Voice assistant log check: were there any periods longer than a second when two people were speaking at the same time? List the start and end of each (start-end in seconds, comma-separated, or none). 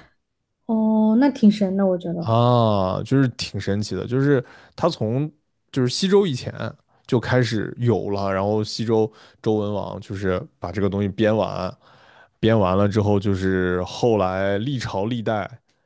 none